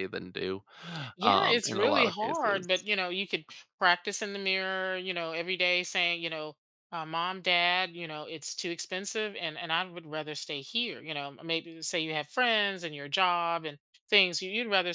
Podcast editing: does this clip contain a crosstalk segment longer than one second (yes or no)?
yes